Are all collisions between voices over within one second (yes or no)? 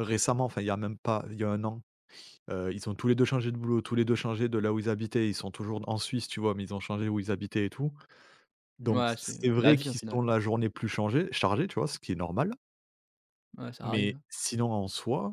no